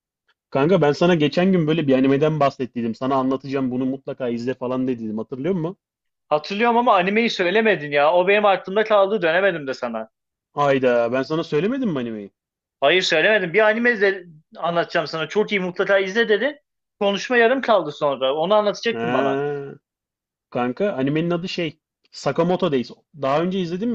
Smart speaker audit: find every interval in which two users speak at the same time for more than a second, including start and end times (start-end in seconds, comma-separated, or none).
none